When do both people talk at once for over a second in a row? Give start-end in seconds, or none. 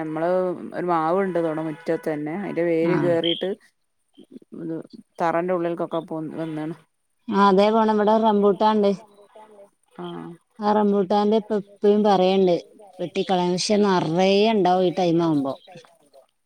13.7-15.5